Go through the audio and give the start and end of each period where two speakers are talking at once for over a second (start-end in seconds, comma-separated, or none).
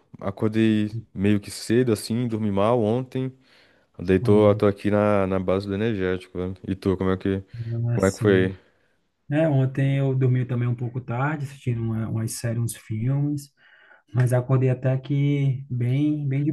none